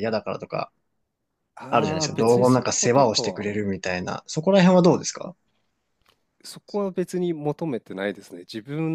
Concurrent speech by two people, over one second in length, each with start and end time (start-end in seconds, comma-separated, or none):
1.7-3.5